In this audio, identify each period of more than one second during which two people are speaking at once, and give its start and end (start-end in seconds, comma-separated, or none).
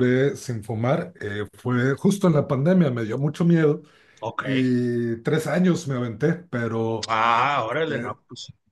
none